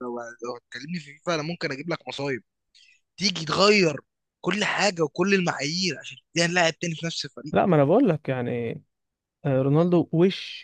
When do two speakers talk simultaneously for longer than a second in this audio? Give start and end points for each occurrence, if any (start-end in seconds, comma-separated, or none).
none